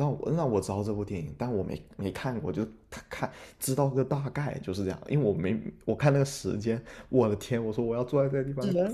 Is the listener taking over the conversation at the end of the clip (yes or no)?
no